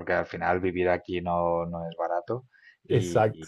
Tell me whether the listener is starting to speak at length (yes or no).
no